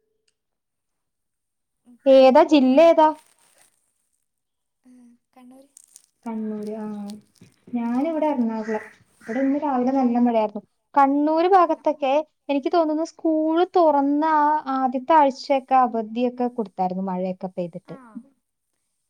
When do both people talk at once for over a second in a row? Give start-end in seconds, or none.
none